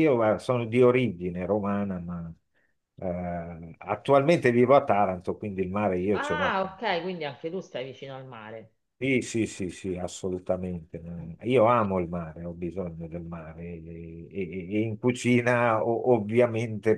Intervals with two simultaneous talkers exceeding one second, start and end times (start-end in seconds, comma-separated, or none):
none